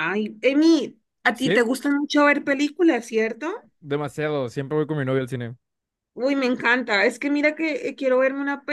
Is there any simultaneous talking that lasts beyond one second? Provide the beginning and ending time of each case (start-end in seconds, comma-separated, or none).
none